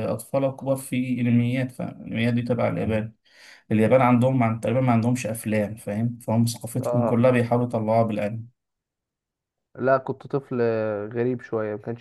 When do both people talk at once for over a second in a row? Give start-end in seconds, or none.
none